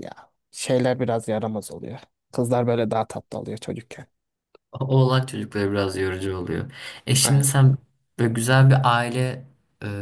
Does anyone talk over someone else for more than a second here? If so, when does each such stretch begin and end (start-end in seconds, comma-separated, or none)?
none